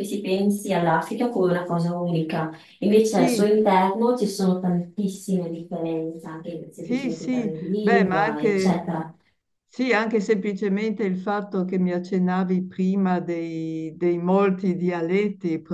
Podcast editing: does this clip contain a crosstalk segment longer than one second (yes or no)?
yes